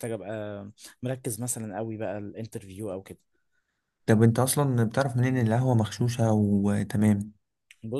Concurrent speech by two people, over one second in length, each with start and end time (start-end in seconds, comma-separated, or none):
none